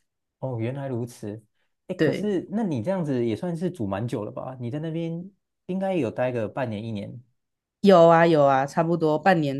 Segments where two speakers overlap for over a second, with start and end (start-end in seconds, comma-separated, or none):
none